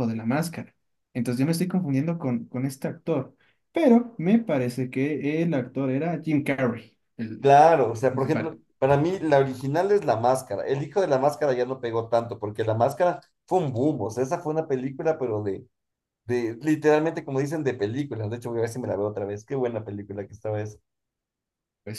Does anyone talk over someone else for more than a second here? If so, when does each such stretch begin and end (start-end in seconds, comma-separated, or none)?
none